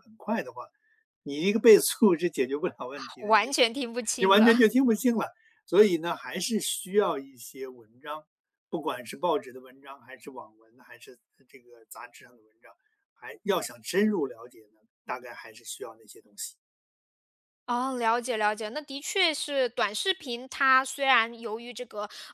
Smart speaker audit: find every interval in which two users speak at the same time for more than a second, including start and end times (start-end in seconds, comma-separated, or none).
none